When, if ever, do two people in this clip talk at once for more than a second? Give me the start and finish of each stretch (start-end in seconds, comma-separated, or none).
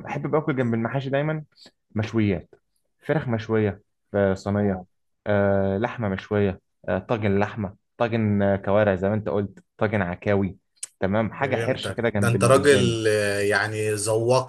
11.4-13.0